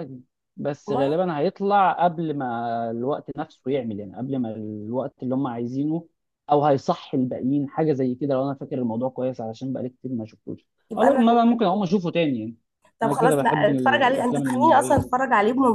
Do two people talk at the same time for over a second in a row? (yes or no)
yes